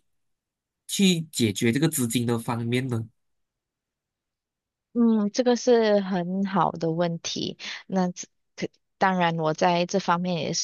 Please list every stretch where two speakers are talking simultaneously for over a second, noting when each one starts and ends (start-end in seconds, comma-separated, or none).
none